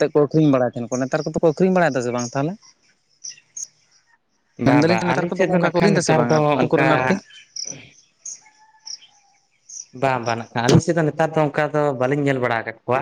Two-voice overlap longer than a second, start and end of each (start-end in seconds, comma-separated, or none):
4.7-6.9